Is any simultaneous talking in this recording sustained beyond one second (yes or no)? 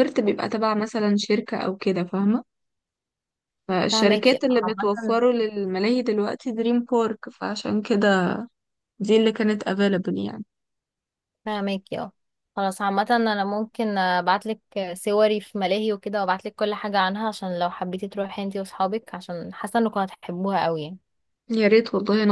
yes